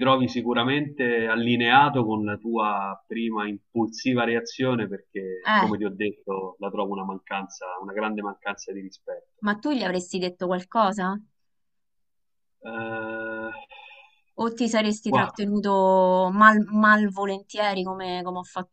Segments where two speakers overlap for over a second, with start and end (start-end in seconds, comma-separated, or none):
none